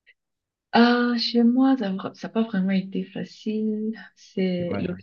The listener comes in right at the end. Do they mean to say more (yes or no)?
no